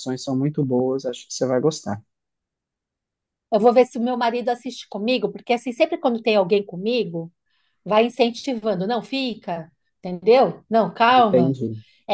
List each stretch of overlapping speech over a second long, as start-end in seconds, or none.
none